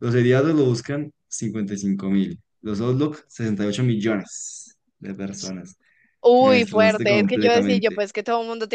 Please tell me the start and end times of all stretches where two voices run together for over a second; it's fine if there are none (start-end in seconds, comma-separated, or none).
6.4-8.0